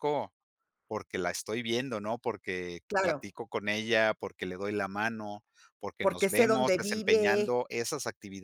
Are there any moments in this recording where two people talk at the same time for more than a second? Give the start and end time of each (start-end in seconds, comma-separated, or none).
6.0-7.5